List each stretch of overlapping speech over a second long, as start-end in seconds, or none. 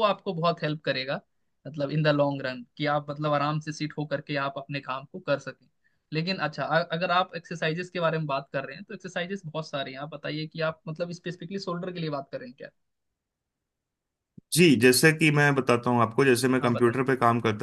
none